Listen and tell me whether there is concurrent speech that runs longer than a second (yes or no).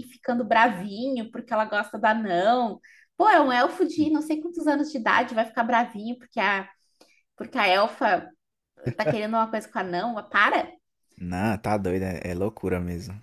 no